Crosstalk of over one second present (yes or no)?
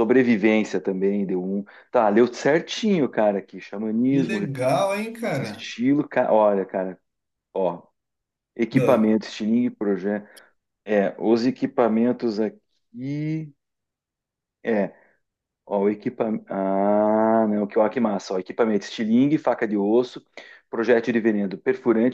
no